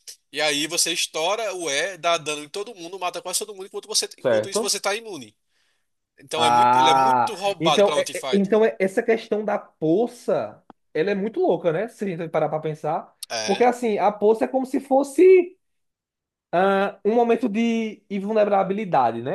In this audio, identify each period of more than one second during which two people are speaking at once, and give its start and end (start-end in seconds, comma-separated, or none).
6.3-8.5